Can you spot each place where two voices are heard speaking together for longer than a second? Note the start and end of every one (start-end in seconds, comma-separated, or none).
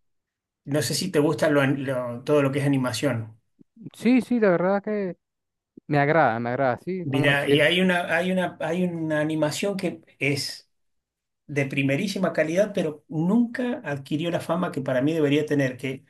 none